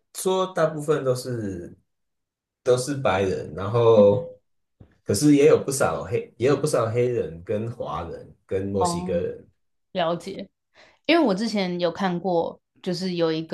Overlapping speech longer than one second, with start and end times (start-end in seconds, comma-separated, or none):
none